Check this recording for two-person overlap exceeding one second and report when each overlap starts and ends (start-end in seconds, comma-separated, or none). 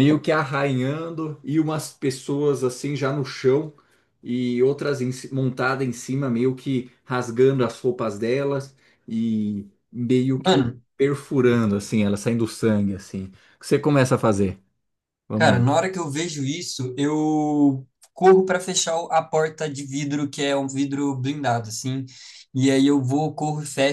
none